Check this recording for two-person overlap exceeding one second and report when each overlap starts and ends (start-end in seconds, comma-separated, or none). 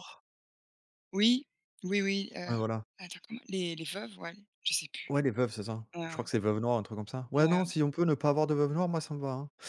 none